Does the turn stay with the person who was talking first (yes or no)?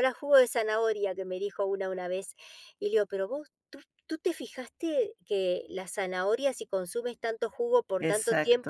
yes